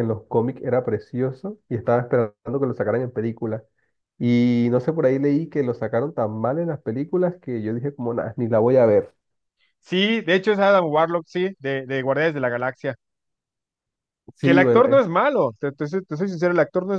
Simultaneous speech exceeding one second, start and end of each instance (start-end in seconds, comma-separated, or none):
none